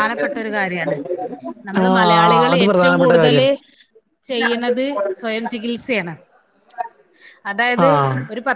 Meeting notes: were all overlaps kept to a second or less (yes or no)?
no